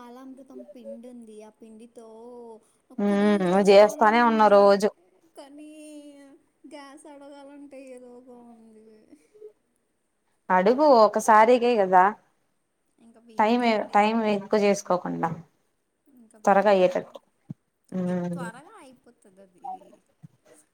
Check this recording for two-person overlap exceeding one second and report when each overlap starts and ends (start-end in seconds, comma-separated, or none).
3.1-4.6